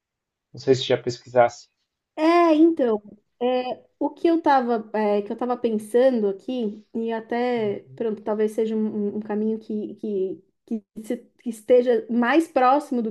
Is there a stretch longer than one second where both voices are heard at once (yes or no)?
no